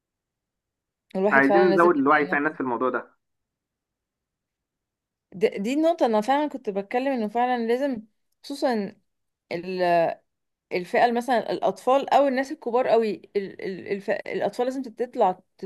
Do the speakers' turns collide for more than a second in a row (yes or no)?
yes